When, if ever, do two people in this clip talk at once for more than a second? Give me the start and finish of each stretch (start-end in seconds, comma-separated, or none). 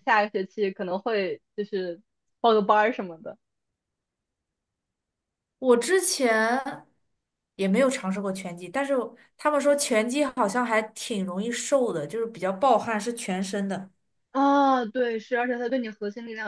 none